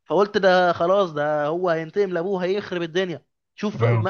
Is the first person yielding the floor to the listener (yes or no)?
no